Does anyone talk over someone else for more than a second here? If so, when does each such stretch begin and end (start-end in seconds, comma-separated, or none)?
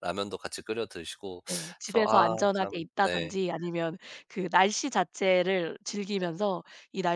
1.8-3.4